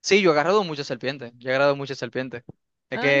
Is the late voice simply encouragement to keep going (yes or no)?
yes